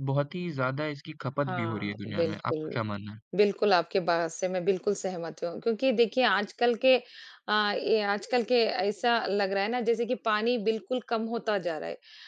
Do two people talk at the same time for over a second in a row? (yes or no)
yes